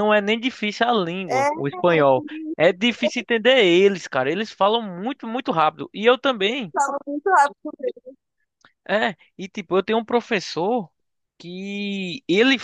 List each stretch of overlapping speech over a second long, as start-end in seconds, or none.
none